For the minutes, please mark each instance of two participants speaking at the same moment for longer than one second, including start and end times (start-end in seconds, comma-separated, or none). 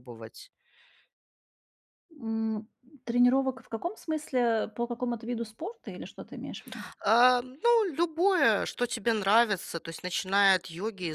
none